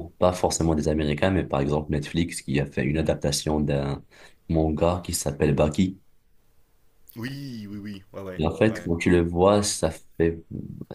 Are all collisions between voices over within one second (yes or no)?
yes